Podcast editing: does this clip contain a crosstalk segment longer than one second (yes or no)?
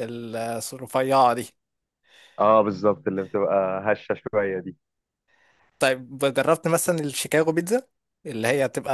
no